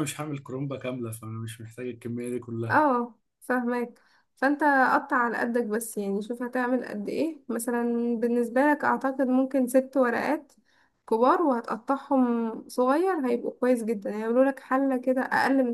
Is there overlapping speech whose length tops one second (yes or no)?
no